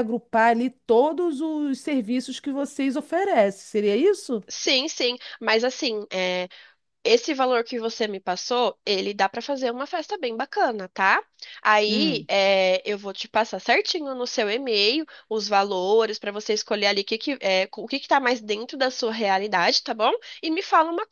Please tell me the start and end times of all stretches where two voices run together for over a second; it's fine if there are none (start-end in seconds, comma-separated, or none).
none